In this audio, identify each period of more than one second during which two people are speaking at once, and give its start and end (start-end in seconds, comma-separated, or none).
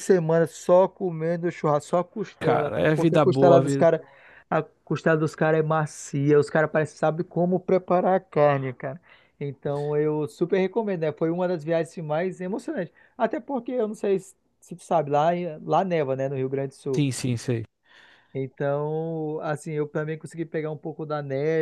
2.4-3.9